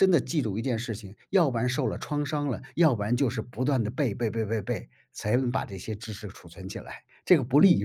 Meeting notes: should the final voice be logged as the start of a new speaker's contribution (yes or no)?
yes